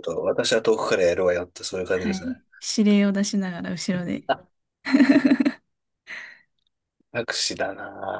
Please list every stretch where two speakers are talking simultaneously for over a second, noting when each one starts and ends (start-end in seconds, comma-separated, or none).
none